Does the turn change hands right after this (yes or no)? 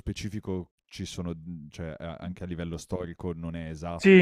yes